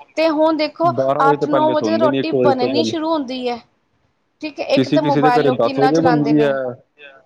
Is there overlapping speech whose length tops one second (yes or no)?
yes